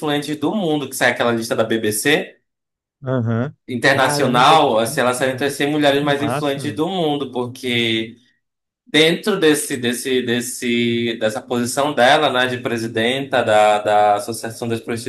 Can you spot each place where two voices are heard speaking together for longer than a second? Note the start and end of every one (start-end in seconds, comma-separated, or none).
3.7-6.8